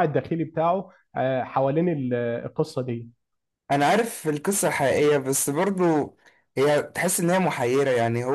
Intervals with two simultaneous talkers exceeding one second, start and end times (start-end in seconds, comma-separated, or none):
none